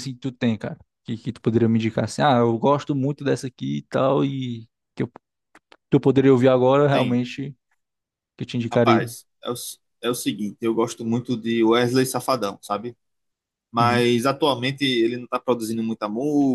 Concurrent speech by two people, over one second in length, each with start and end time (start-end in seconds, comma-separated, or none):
none